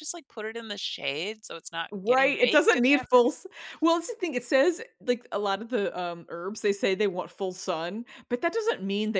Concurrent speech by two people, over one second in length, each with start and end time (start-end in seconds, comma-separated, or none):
1.9-3.3